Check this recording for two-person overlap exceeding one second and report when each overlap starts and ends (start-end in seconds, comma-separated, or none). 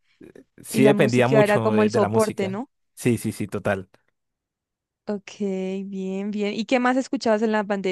0.7-2.7